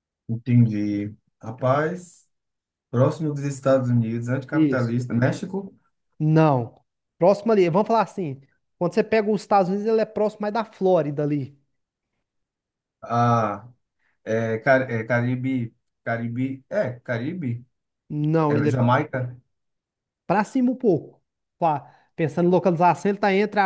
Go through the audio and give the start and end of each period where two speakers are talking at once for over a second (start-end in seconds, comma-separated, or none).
none